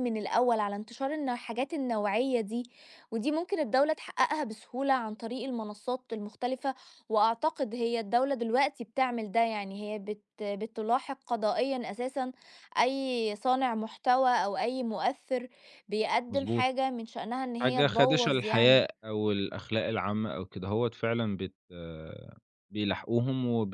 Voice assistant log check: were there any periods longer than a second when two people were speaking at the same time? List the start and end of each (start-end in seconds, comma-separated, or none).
17.6-18.9